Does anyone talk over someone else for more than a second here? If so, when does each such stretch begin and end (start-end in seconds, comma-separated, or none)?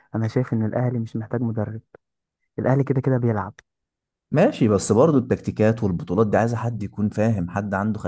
none